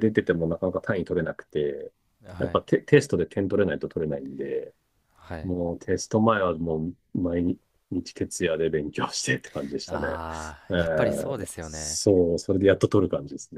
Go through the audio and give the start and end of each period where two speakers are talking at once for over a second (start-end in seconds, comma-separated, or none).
10.7-12.0